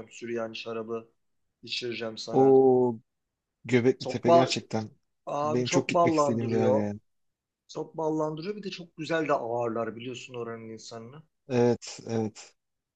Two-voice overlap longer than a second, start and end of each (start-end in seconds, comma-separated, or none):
5.4-6.8